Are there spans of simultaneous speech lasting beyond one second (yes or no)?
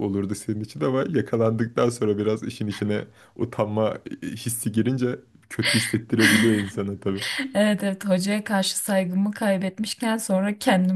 no